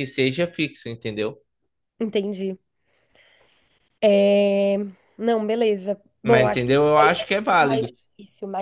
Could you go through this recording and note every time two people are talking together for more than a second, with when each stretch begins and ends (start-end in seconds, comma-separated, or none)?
6.2-7.9